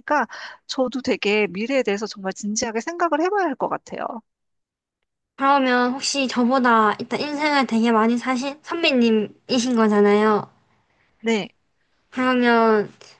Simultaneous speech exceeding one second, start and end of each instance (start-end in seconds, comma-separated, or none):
none